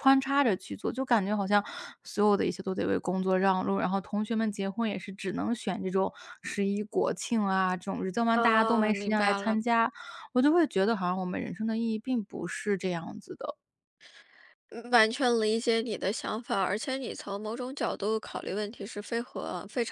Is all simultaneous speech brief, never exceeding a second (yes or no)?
no